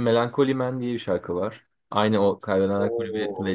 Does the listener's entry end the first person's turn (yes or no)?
yes